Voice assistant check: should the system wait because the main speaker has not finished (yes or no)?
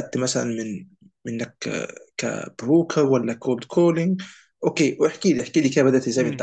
no